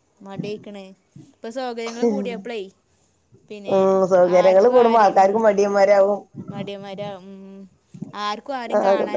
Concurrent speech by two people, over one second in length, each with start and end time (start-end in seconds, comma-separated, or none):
none